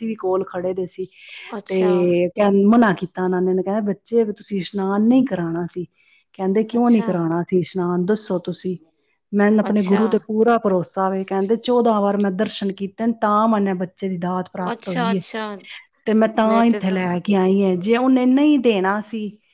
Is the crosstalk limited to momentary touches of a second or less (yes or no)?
yes